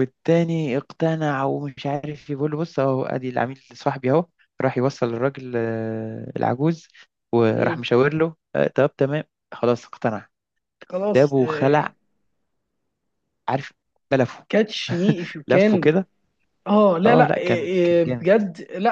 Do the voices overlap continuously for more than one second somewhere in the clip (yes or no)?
yes